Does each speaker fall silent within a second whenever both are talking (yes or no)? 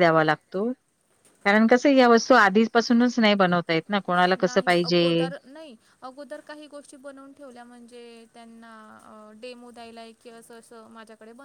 yes